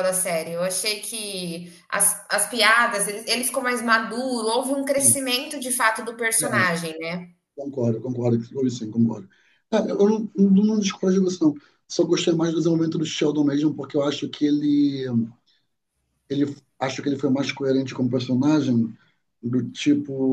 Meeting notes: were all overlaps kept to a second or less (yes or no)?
yes